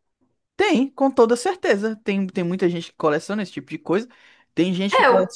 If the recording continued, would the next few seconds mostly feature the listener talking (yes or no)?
no